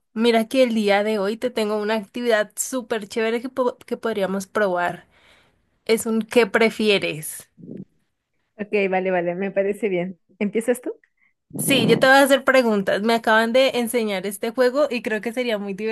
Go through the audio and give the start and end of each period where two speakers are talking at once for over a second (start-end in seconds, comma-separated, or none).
none